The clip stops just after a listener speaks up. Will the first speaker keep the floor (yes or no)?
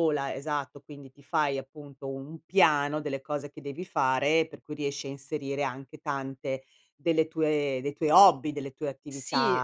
no